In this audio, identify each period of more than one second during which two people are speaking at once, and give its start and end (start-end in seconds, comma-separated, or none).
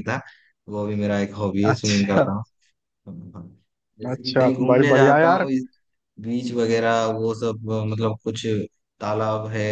4.1-5.5